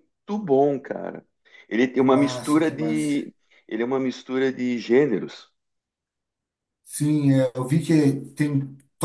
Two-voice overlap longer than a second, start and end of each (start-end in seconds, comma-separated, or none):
2.0-3.2